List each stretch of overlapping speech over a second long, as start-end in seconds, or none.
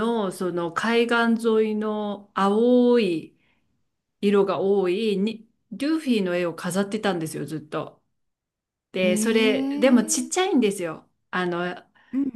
9.0-10.5